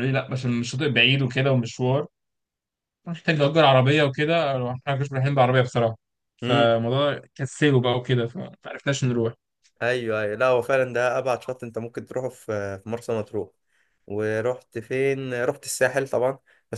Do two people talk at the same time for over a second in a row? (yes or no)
no